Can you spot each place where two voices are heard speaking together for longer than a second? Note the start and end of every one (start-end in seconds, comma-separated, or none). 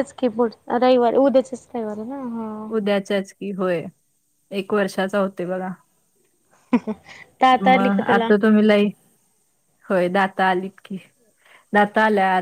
none